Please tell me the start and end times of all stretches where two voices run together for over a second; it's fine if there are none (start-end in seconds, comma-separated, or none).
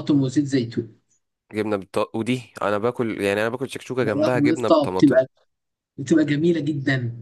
4.0-5.2